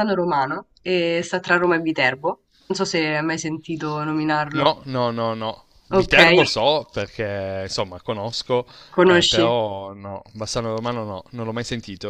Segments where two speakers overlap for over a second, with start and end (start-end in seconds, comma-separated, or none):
none